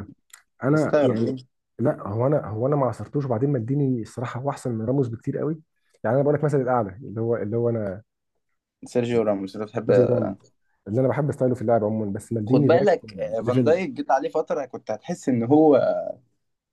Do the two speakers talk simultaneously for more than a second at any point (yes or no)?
yes